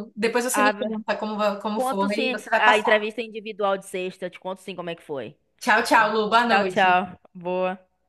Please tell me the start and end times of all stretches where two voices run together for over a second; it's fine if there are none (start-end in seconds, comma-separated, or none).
1.8-3.1